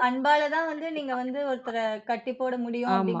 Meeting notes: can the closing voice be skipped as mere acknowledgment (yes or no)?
no